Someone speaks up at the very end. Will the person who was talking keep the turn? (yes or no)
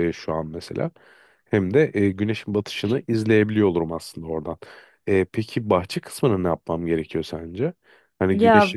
yes